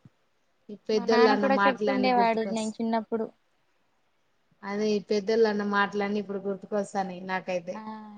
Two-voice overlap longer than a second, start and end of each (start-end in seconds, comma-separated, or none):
1.0-2.7